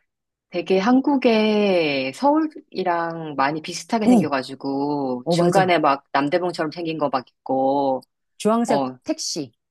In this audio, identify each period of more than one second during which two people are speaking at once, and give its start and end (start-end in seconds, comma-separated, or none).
none